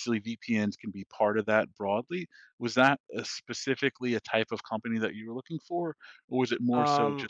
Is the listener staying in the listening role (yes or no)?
no